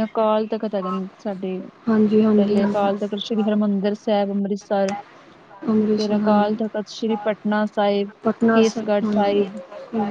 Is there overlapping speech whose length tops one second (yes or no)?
yes